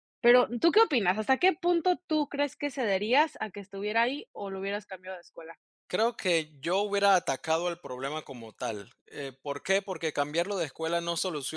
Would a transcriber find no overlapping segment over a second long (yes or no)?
yes